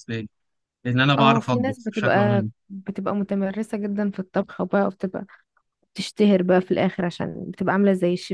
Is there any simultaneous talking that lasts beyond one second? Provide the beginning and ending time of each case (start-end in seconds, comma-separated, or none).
1.2-2.5